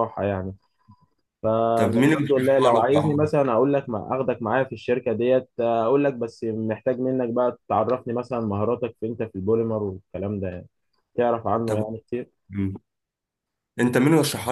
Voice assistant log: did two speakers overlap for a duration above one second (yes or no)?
yes